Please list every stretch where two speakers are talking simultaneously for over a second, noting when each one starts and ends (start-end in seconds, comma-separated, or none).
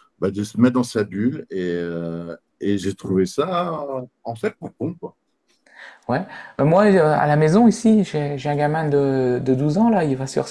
none